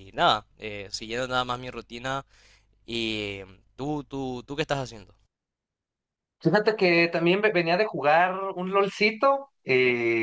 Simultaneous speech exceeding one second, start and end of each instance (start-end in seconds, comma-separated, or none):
none